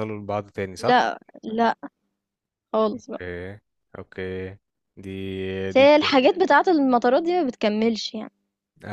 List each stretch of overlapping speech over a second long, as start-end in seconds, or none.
none